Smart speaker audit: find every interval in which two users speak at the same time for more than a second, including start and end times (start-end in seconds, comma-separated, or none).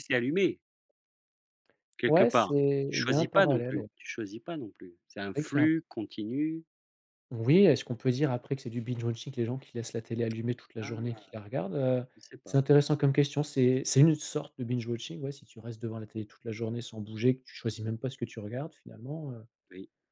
2.1-3.9